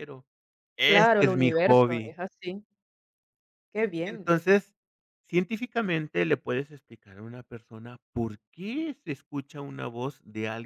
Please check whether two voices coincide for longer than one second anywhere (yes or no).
yes